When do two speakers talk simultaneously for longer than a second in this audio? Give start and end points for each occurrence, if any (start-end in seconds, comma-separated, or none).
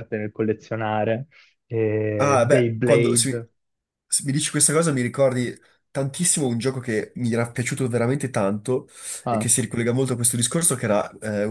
2.2-3.5